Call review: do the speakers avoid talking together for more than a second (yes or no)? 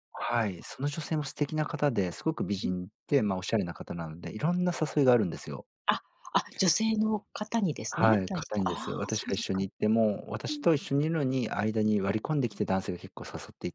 no